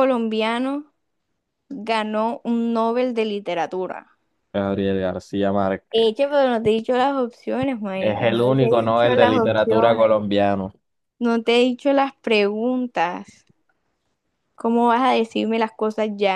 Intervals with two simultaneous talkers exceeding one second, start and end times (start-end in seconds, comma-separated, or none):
8.0-10.2